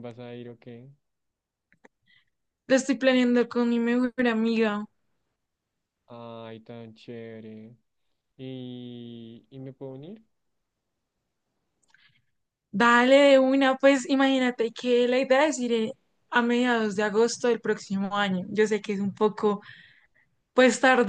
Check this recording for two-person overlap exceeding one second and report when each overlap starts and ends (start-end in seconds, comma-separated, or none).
none